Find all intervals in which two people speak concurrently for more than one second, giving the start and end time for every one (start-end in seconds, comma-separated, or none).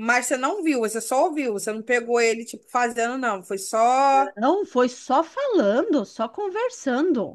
none